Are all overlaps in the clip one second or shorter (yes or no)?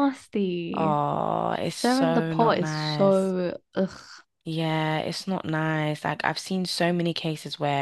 no